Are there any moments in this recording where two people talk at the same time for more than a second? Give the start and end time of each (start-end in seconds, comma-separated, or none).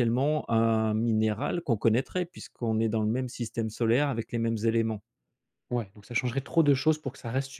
none